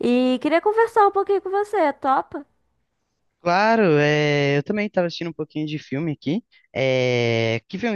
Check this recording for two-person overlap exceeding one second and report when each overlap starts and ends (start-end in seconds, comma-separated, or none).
none